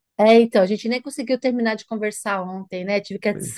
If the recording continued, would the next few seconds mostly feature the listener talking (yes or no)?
no